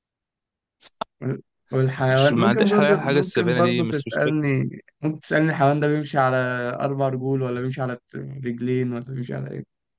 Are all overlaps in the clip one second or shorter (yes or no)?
no